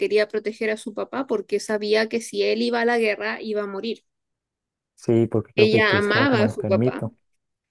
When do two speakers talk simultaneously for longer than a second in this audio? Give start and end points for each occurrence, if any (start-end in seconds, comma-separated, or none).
5.5-7.0